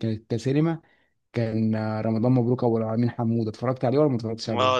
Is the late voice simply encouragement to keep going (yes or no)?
no